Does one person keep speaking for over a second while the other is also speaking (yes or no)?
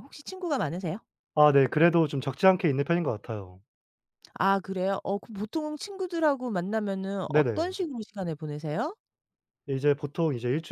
no